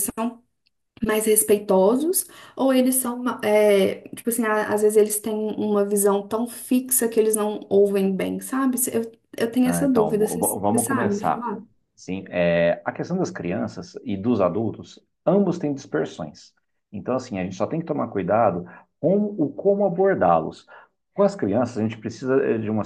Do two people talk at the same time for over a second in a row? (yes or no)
yes